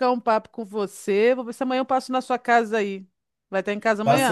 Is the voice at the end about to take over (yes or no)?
yes